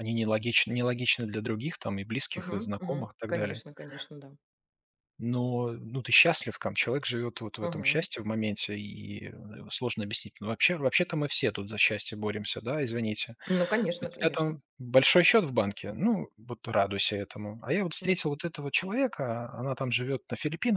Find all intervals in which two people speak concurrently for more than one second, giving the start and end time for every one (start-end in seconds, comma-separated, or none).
2.3-3.6